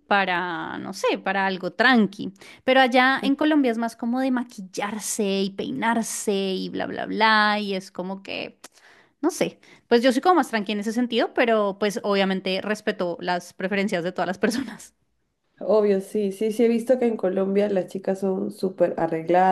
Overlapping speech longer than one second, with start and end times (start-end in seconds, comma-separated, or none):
none